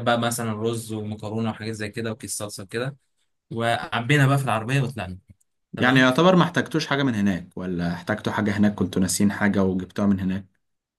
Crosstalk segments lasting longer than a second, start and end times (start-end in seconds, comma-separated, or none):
none